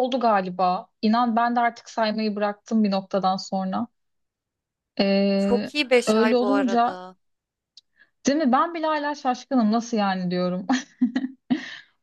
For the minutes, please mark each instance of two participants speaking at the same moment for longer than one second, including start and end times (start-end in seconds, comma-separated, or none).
5.4-7.0